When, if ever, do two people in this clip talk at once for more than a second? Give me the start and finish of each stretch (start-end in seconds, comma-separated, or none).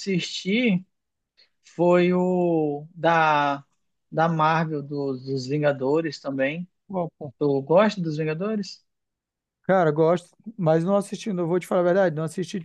none